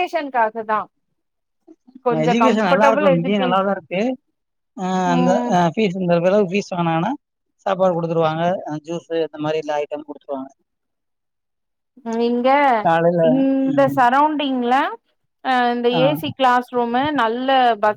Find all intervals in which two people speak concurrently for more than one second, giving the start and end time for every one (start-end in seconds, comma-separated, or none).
2.1-3.5